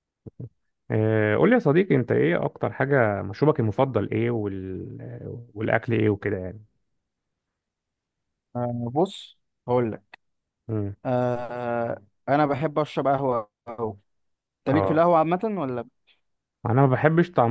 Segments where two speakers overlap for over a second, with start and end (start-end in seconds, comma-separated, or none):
none